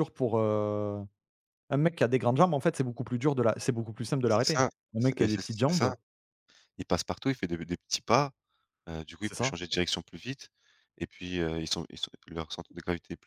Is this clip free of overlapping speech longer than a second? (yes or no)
no